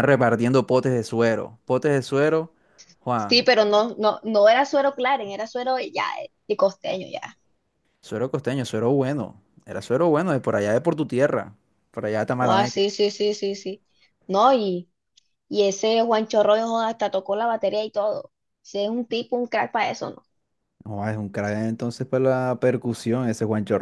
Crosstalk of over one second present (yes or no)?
no